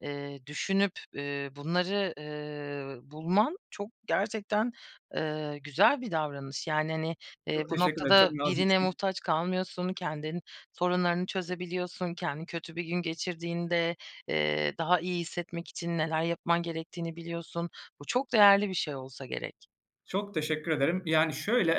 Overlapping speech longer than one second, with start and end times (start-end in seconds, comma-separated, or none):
7.5-8.9